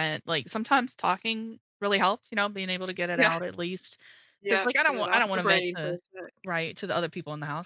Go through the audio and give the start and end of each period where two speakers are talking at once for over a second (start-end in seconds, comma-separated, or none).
4.5-6.0